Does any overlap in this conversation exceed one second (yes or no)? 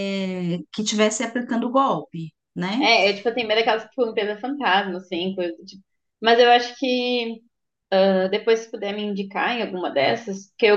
no